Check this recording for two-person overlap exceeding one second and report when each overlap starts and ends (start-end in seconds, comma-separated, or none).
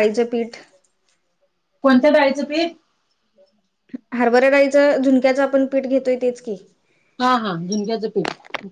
none